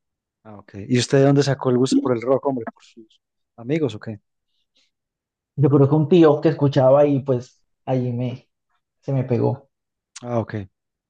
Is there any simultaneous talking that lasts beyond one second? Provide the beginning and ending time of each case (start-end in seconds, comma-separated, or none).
none